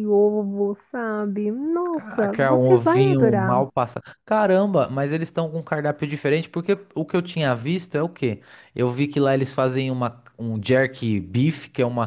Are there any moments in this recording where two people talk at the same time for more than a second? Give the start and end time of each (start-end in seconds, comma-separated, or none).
1.9-3.6